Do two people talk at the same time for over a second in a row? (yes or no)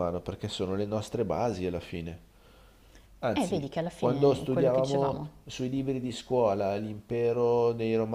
yes